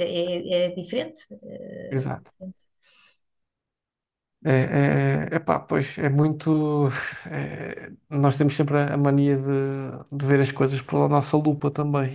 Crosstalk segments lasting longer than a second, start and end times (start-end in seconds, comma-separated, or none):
none